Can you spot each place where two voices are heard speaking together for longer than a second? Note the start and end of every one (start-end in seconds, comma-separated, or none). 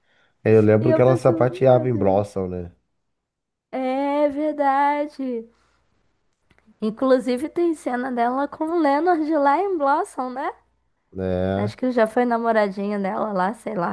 0.8-2.2